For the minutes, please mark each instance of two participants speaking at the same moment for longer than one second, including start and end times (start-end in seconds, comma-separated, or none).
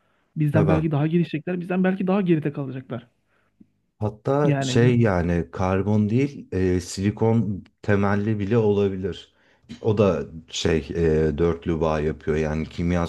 none